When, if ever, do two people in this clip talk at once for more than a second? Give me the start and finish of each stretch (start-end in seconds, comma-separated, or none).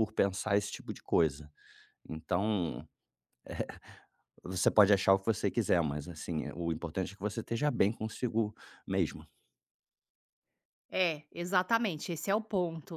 none